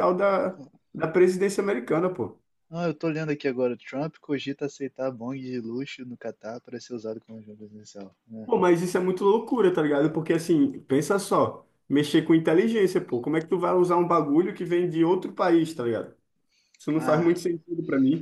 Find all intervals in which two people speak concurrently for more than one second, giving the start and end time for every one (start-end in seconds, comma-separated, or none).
none